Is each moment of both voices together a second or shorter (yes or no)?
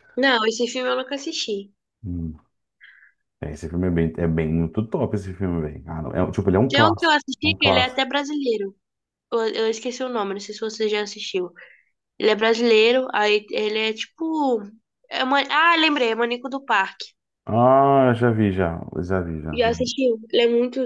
no